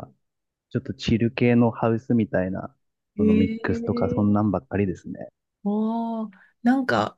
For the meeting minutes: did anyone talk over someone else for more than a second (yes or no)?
yes